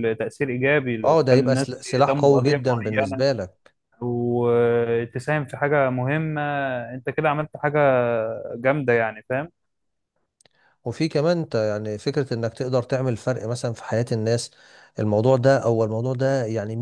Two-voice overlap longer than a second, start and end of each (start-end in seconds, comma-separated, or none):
1.0-3.2